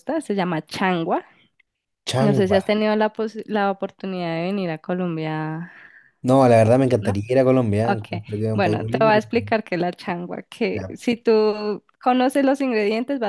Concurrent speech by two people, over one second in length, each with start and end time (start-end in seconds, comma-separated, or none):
7.8-9.5